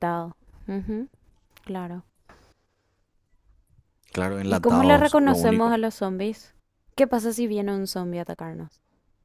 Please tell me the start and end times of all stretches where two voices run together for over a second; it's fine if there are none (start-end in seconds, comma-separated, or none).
4.5-5.8